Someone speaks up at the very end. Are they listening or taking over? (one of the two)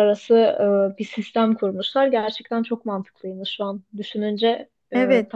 taking over